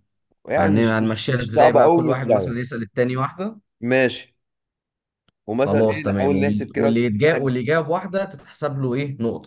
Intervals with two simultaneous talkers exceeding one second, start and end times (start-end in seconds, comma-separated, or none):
0.6-2.6, 5.6-6.9